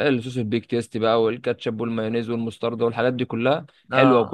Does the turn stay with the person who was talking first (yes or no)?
yes